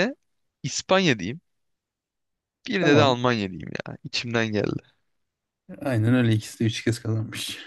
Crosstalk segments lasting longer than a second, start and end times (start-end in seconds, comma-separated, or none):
none